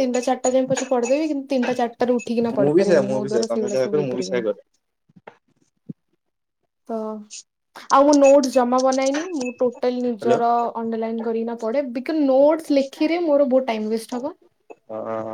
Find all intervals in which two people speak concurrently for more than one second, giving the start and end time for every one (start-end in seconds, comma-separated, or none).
2.6-4.4